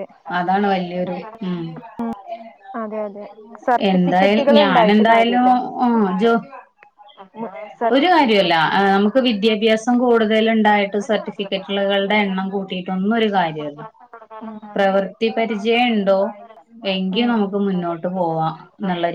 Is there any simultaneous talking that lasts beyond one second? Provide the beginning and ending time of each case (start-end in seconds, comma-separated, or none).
3.9-5.5